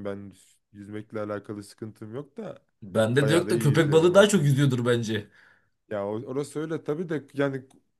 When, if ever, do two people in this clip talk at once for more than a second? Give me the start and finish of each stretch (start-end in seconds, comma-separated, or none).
3.2-4.4